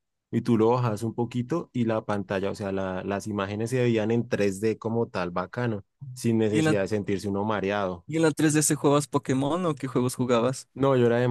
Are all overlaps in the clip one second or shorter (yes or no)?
yes